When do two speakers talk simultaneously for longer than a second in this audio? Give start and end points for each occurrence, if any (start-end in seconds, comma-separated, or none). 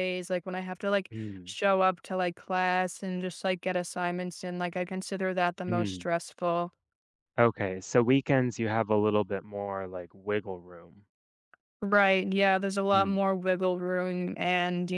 none